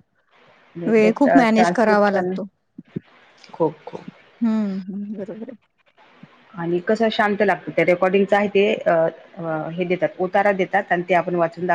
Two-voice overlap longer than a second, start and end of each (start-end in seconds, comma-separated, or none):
1.0-2.4